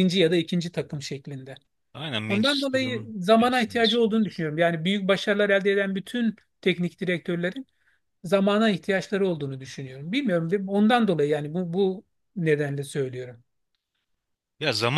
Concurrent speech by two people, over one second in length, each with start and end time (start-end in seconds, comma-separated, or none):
2.3-3.8